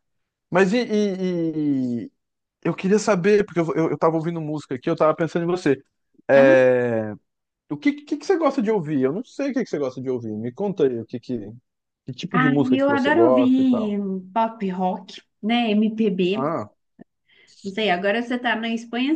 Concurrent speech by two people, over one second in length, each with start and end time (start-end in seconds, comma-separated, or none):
12.3-14.0